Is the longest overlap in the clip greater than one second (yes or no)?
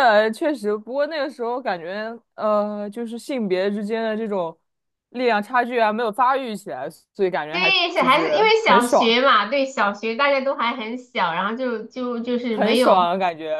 yes